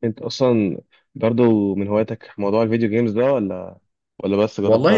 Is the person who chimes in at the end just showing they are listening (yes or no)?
no